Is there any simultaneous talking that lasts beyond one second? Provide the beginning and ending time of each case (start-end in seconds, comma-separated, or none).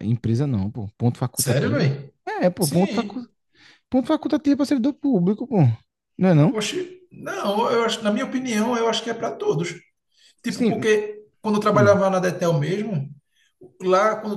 none